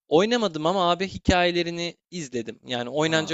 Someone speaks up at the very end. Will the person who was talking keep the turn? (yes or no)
no